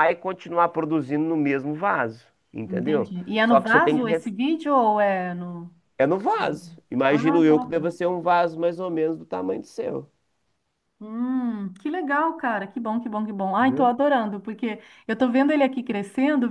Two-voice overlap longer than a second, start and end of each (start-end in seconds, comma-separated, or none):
2.6-4.3